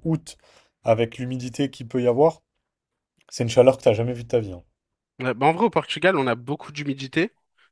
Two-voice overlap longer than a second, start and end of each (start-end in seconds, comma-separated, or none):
none